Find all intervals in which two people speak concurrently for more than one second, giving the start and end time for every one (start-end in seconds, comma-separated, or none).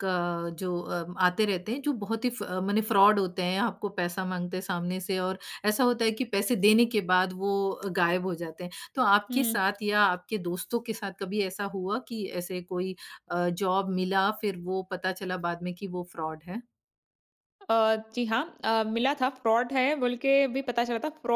none